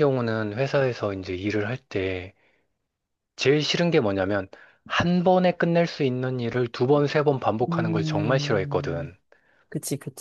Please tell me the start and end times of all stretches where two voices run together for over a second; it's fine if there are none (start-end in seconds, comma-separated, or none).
7.7-9.1